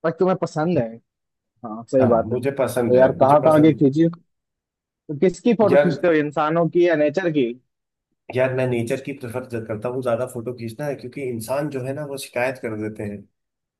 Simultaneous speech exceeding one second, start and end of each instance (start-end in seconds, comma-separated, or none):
2.0-3.9